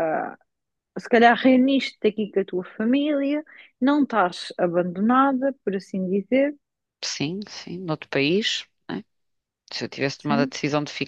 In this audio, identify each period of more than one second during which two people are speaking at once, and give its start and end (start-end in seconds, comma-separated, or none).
none